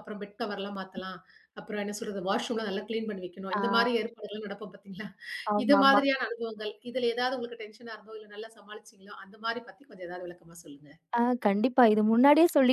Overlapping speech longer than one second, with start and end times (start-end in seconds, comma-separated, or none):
none